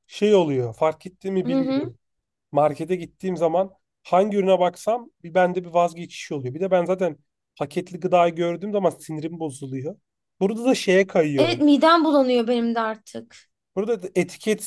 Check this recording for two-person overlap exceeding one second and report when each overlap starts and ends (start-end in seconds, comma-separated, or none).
none